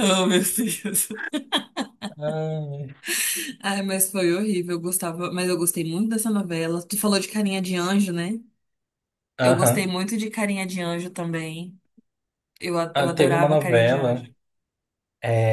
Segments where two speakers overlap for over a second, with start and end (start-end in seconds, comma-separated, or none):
12.9-14.3